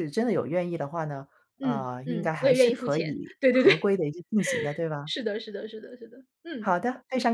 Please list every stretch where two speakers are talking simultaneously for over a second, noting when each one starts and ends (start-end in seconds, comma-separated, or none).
1.6-3.7